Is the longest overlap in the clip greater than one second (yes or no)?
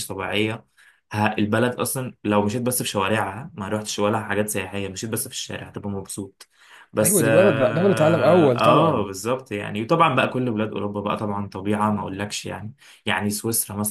yes